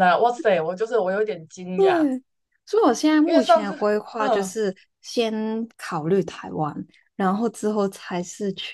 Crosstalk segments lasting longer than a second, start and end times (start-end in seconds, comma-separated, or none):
3.2-4.6